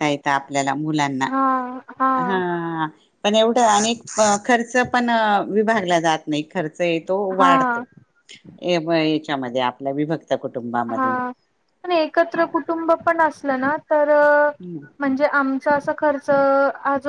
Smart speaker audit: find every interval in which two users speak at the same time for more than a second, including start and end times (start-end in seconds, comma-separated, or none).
none